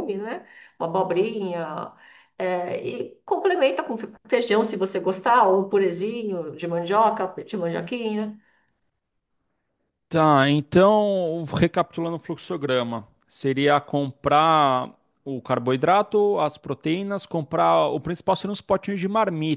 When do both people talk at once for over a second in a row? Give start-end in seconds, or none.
none